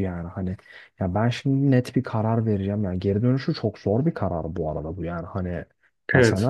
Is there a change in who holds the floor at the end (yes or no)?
no